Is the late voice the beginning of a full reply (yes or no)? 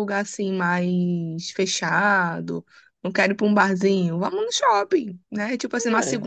no